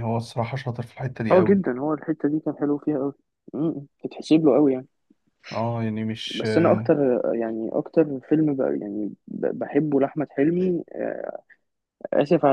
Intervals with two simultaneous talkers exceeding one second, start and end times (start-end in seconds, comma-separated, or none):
none